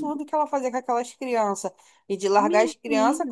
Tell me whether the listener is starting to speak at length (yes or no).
no